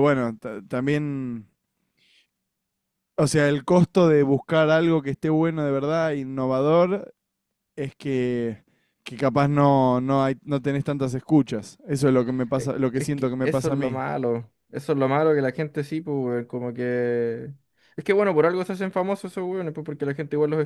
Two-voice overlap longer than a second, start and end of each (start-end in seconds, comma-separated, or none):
12.6-14.0